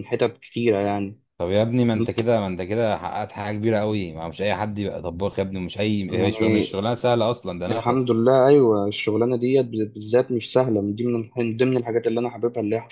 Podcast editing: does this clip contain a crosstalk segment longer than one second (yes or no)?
no